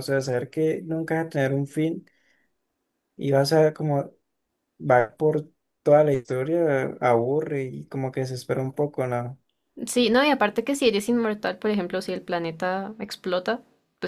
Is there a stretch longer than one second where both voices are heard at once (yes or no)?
no